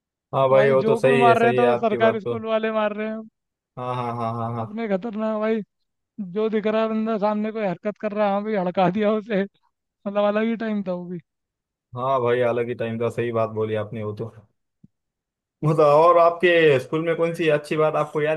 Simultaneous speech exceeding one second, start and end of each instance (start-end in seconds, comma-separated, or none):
0.5-2.4